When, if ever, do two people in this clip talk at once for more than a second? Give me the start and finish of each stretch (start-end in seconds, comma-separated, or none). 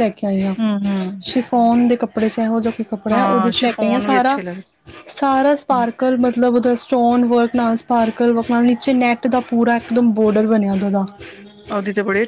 3.1-4.4